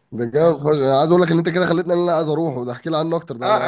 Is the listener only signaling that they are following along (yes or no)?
no